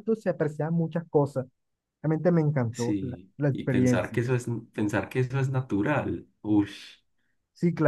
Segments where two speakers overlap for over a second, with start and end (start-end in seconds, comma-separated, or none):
2.7-4.2